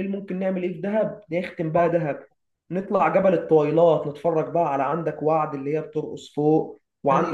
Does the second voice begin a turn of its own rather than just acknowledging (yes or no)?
no